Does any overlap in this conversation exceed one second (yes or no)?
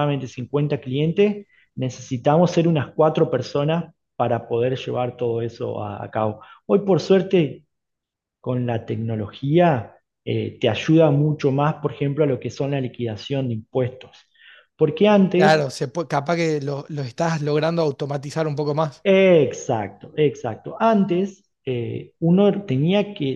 no